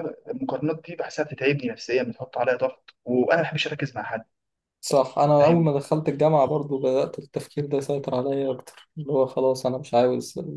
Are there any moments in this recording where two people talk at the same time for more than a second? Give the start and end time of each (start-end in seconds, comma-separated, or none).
none